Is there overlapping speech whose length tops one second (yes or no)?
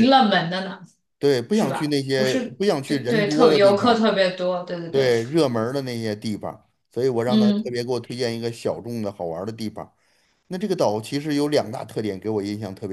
yes